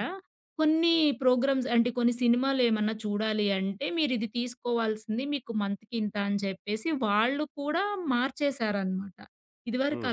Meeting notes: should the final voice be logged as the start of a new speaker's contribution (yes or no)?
no